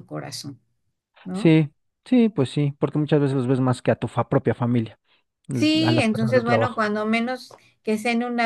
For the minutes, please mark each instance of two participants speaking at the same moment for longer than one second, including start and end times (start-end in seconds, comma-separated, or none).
5.5-6.8